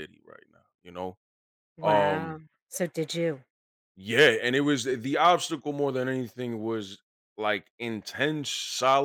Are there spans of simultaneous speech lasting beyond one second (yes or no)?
no